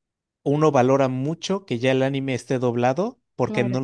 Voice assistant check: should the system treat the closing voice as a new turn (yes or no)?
no